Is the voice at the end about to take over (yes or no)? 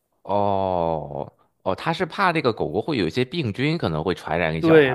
yes